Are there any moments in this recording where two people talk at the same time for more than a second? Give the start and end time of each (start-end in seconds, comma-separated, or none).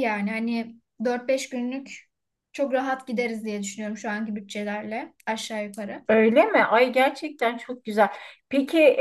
none